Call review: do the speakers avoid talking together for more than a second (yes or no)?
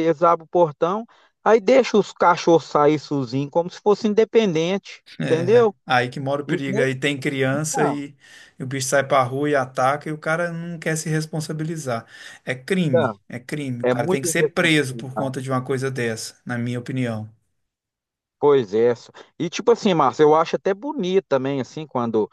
no